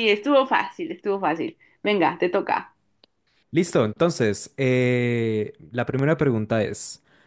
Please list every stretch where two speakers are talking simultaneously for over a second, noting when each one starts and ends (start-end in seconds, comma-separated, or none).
none